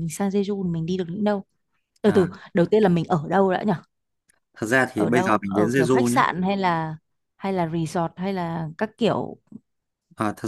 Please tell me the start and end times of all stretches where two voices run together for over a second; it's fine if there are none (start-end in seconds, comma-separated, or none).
4.9-6.2